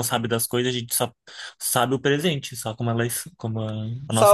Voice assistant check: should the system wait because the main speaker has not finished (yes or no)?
no